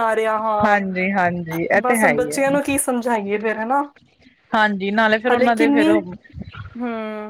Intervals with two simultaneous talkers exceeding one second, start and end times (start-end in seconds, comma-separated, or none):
0.6-2.4